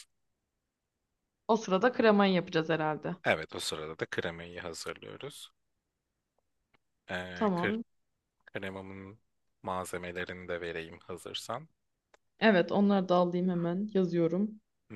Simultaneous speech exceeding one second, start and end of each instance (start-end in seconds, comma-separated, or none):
none